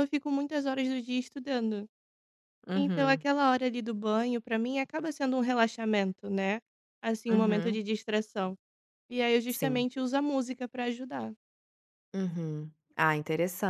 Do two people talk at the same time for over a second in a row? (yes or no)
no